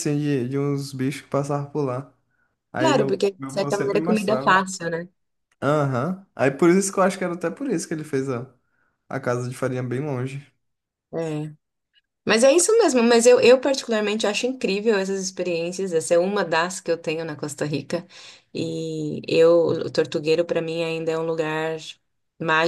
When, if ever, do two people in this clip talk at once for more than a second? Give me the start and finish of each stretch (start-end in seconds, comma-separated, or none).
2.8-4.7